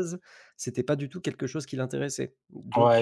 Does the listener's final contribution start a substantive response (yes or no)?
yes